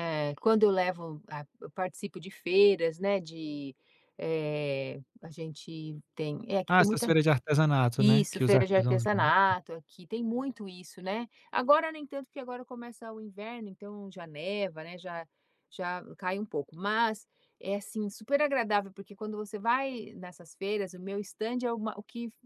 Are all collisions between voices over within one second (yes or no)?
no